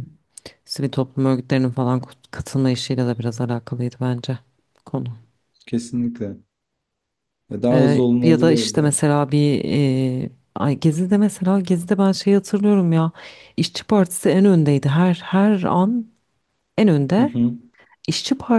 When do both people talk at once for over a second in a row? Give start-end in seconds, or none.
7.7-8.9